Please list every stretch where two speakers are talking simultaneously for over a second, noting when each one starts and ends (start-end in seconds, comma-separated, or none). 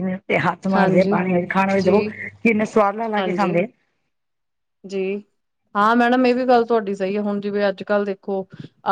none